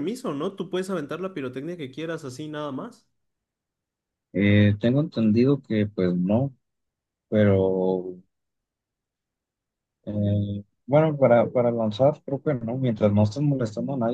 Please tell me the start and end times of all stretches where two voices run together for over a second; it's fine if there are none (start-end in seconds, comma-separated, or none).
none